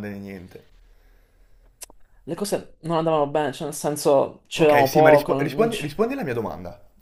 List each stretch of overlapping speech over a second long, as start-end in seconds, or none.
4.6-5.8